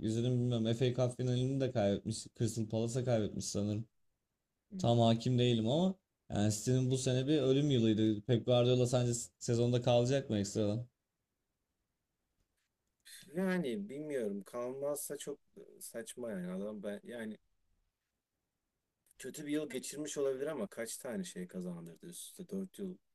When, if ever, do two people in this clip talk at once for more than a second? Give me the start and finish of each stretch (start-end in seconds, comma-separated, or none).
none